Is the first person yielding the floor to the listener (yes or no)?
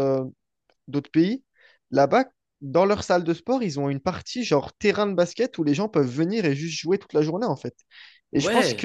no